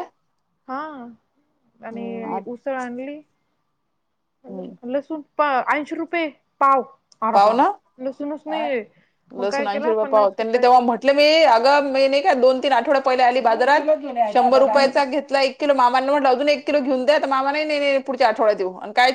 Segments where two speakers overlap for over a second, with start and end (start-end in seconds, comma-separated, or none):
none